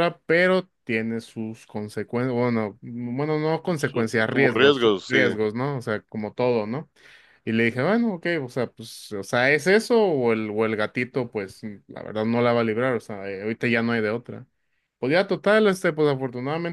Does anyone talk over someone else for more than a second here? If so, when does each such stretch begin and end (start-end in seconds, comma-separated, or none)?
3.8-5.3